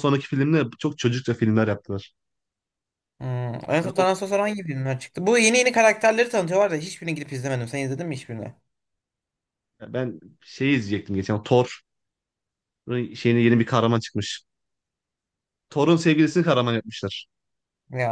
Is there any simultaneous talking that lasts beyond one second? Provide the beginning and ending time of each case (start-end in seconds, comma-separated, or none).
none